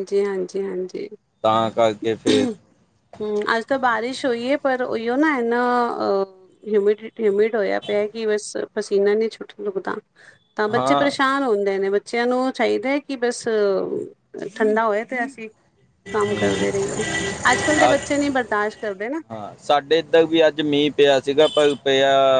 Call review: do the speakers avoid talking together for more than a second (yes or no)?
yes